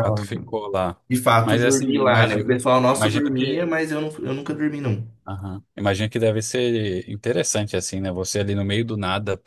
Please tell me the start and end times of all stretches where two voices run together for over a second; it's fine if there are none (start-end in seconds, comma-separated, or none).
1.4-3.7